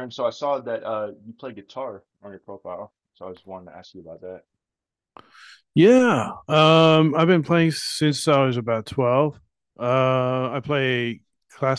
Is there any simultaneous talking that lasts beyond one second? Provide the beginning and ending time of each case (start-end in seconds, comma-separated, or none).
none